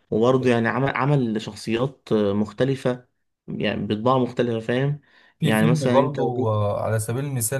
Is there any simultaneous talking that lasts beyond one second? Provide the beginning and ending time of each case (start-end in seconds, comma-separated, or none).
5.4-6.6